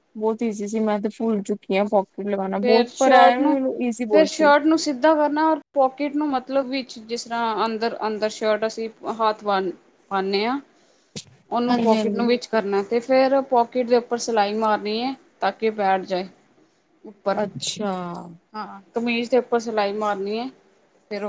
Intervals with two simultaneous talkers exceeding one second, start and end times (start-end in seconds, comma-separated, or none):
none